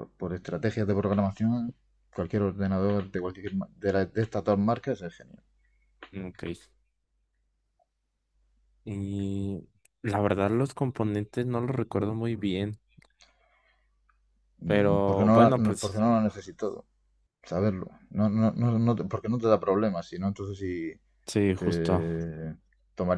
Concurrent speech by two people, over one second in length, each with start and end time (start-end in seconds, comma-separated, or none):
14.6-16.0